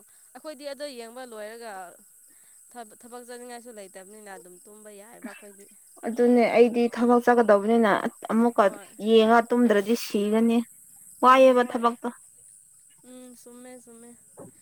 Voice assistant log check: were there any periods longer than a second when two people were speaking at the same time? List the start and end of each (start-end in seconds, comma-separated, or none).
none